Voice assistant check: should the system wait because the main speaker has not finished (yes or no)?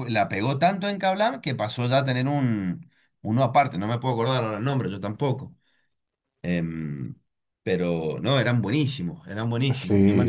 no